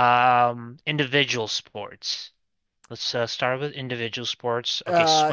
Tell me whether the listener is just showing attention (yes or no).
no